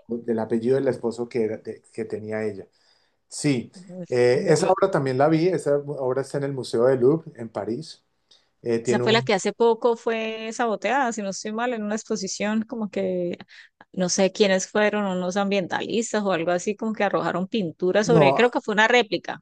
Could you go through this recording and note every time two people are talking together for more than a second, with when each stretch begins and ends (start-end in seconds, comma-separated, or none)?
none